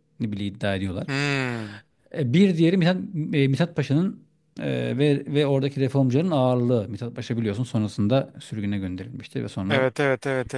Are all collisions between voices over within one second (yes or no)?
yes